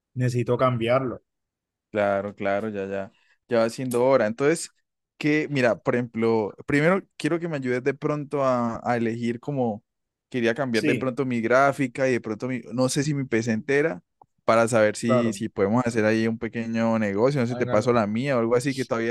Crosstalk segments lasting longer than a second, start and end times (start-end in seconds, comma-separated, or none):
none